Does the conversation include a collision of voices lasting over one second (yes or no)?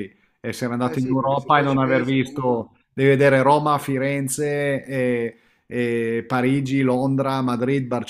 yes